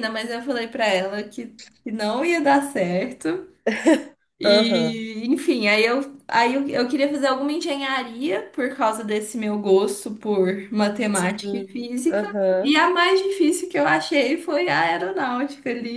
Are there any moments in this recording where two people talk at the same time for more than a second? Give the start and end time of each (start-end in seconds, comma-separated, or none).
11.1-12.8